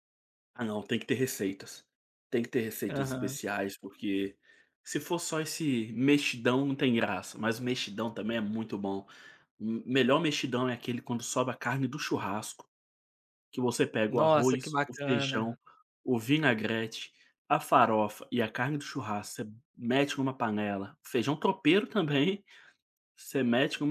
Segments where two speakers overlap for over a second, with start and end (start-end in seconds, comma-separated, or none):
14.1-15.6